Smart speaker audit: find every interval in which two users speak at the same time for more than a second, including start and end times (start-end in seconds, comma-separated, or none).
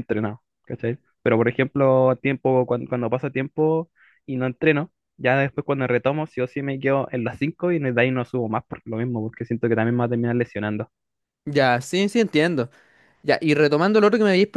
none